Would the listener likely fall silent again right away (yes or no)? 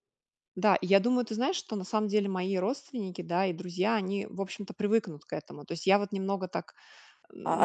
no